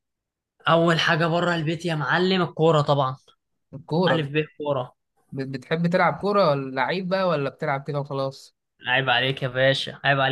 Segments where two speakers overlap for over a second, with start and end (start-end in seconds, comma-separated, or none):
none